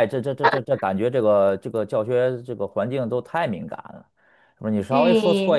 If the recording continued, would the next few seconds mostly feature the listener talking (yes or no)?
yes